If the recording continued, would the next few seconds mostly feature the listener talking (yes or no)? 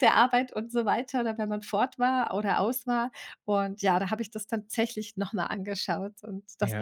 yes